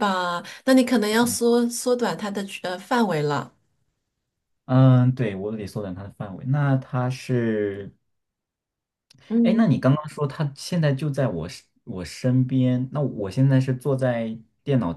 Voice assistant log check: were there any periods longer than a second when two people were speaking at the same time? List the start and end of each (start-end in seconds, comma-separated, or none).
none